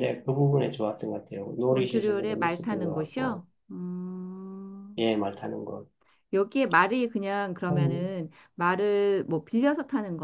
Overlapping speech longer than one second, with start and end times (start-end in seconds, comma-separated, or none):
1.7-3.4